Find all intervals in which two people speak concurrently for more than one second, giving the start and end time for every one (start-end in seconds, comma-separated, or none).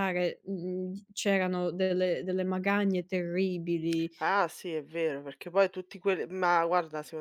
none